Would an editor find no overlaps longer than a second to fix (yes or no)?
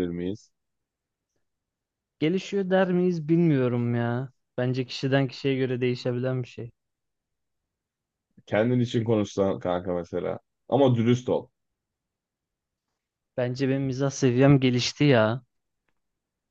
yes